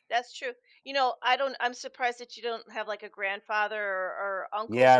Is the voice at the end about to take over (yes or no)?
yes